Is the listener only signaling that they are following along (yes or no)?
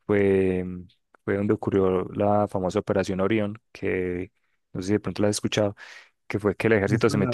yes